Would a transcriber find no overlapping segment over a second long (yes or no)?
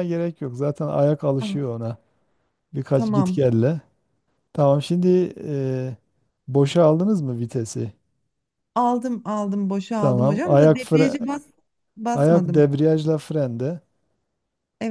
no